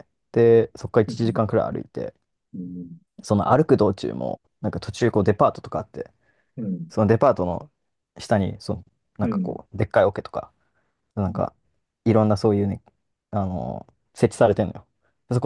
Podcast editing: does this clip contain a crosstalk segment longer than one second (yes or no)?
no